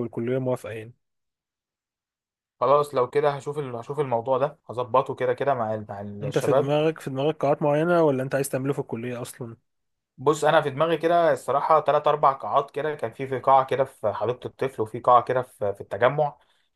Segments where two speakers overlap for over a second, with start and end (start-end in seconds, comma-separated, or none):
none